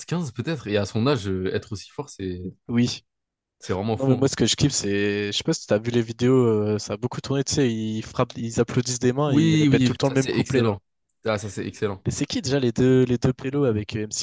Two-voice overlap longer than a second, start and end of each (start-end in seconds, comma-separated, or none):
9.3-10.8